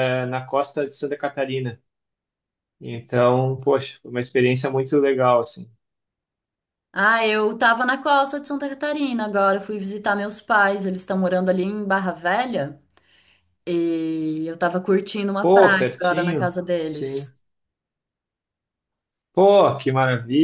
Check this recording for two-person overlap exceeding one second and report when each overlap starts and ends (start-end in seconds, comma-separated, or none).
15.4-17.3